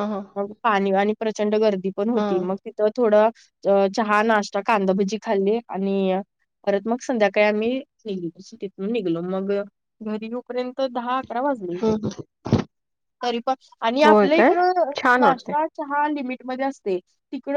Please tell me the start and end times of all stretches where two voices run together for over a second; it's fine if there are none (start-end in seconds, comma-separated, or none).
none